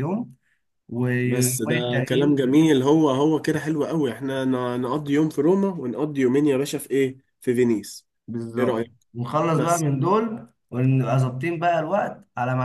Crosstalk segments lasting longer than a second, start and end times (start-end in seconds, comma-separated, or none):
1.2-2.7